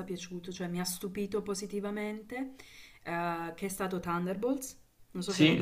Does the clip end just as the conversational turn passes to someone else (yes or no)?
yes